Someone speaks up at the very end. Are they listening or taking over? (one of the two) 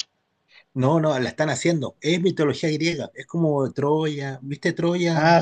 taking over